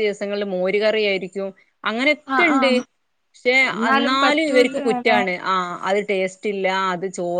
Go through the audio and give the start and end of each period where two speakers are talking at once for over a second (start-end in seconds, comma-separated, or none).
3.7-5.2